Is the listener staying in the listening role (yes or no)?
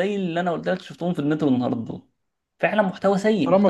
no